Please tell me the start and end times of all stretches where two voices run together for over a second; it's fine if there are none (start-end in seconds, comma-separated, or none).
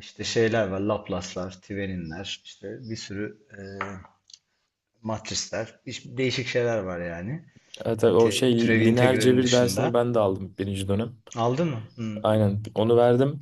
8.1-10.0